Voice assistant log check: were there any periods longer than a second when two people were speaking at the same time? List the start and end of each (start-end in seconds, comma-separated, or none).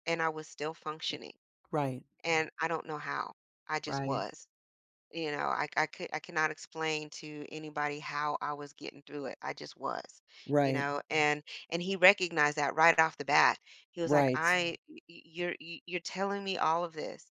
none